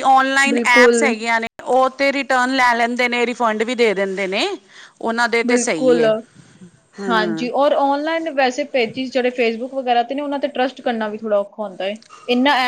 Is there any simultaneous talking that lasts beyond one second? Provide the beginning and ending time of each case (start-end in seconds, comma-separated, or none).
none